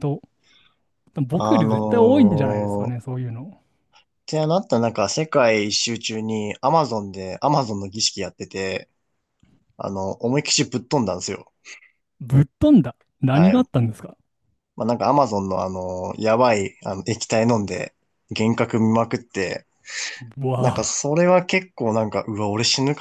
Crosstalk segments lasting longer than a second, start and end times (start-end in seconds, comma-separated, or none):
1.3-3.0